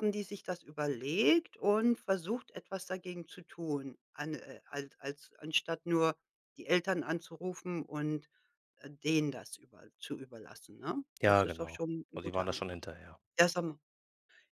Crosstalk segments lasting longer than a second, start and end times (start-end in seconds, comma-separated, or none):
11.2-12.8